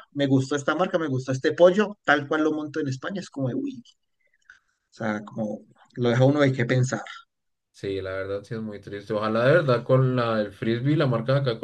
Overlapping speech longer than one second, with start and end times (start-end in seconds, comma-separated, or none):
none